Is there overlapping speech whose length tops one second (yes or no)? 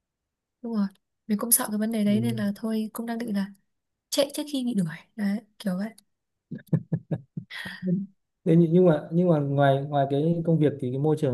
no